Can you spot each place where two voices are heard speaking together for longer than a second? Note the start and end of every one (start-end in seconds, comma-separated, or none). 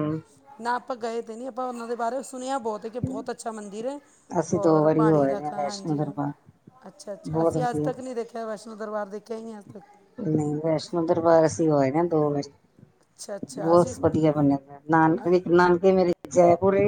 4.5-6.1